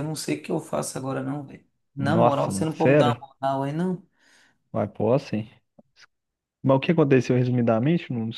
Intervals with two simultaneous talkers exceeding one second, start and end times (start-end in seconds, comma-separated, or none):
2.0-3.2